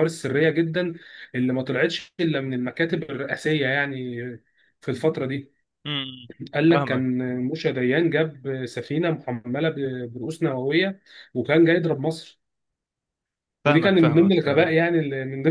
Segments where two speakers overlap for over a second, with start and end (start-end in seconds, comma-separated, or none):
13.6-14.8